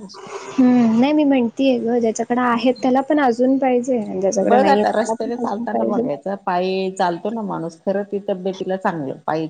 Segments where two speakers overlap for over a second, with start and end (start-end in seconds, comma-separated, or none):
4.5-6.0